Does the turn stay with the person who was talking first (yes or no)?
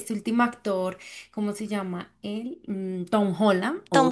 yes